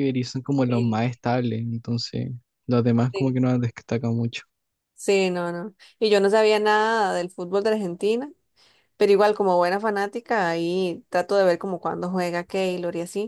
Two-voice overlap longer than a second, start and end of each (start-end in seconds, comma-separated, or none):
none